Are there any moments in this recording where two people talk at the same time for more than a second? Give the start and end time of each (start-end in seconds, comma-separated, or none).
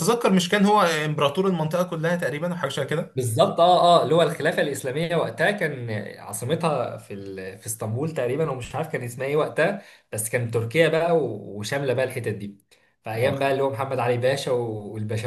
none